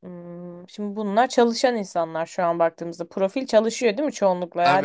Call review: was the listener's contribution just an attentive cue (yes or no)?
no